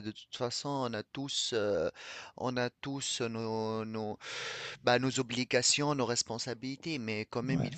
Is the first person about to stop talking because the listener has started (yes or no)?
no